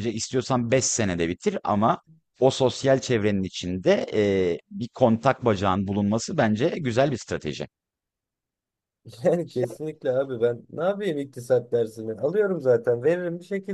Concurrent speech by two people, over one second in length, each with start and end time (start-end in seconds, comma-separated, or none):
none